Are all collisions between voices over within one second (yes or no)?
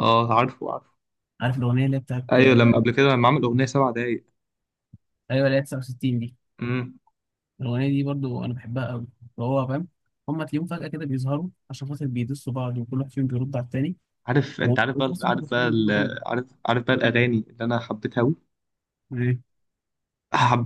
no